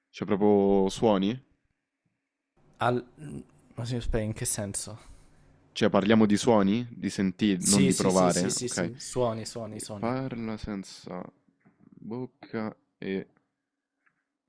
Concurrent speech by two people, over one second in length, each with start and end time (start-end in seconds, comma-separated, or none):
7.6-8.9